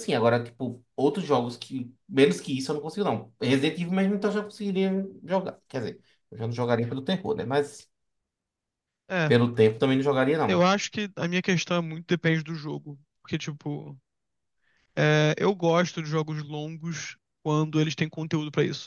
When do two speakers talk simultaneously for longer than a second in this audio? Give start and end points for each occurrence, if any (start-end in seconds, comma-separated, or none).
none